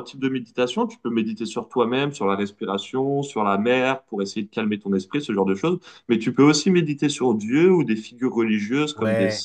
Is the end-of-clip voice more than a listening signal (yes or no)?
yes